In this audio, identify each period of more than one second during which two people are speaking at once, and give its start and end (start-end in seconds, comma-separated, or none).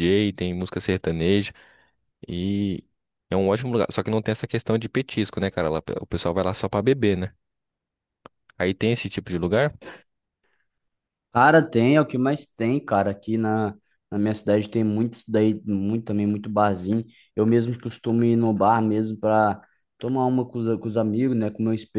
none